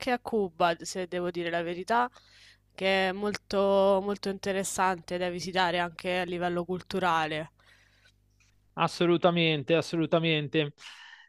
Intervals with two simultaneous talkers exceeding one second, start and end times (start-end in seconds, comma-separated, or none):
none